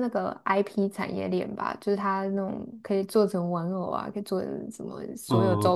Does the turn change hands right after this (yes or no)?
yes